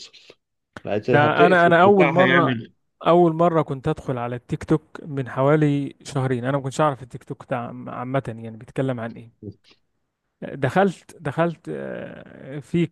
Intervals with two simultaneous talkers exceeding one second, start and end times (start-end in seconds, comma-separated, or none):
1.1-2.6